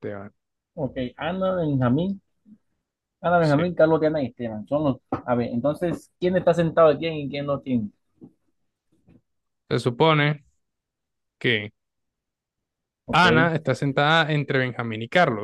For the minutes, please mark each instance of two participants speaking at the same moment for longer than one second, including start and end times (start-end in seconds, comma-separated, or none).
none